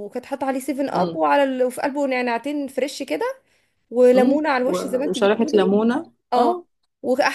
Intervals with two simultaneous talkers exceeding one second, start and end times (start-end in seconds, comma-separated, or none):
4.1-5.7